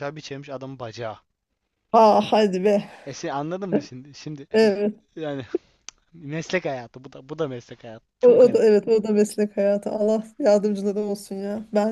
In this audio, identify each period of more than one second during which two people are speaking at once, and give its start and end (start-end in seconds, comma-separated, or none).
none